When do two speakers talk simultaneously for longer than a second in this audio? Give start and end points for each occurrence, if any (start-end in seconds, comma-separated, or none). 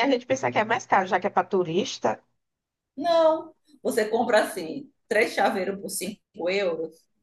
none